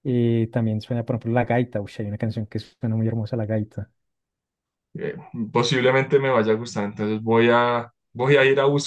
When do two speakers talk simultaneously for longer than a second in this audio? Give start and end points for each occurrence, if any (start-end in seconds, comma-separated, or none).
none